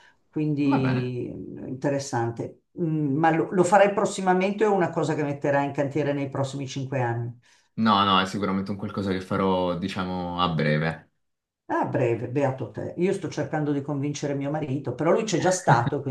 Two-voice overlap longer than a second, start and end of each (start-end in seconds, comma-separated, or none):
none